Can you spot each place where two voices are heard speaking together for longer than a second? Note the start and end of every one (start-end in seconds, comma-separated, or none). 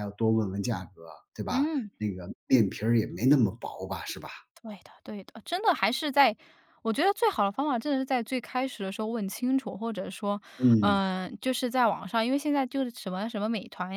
none